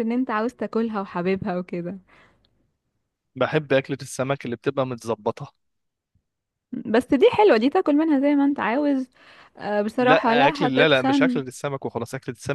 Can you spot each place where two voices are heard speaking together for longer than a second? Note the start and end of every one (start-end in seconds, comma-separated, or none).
10.0-11.4